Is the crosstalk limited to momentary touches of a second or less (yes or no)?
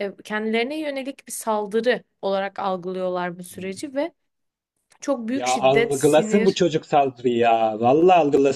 no